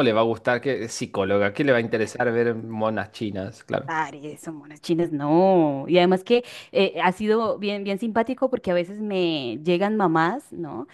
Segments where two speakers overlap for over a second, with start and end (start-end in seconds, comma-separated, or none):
none